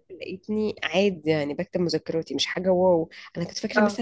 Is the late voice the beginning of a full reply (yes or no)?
no